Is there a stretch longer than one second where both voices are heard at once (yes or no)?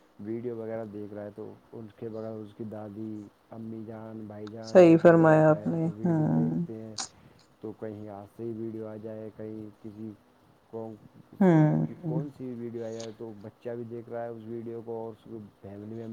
yes